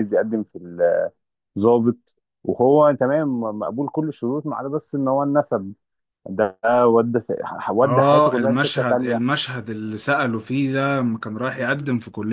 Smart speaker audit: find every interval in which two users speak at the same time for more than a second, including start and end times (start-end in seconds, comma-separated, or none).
7.8-9.2